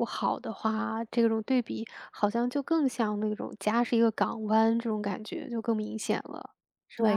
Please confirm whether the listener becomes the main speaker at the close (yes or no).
yes